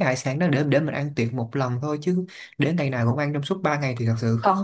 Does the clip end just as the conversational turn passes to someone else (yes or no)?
yes